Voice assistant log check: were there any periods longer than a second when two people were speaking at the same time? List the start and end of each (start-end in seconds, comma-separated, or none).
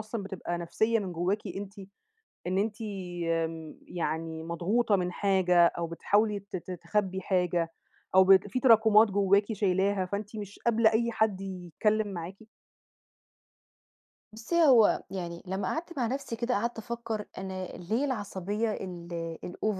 none